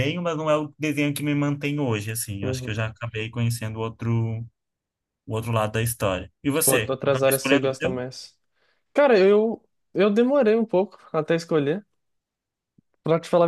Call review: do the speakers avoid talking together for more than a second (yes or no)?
no